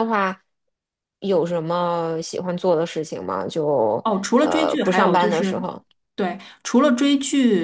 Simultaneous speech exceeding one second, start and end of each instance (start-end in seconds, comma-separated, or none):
4.0-5.6